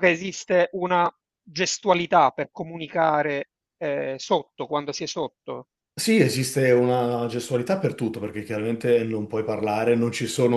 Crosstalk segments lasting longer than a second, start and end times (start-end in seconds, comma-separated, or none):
none